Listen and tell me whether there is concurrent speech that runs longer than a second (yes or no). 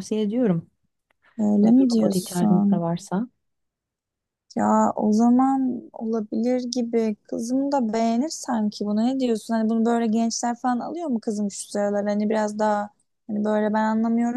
yes